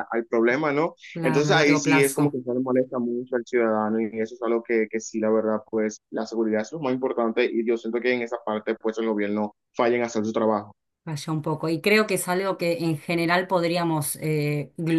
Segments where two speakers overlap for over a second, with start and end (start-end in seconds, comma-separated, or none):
1.1-2.4